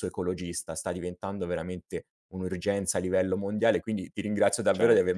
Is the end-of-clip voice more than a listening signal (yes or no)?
no